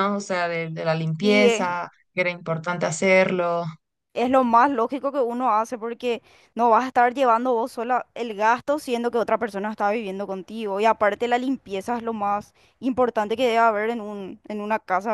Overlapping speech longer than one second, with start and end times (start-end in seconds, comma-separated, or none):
none